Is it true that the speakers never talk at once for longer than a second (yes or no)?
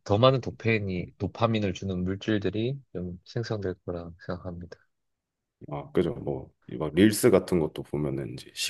yes